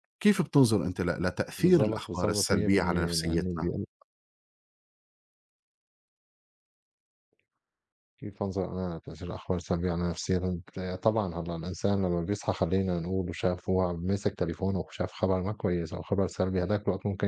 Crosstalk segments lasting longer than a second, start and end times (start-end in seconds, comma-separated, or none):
1.6-3.7